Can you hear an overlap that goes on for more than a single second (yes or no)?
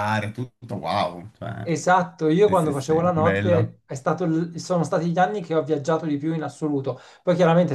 yes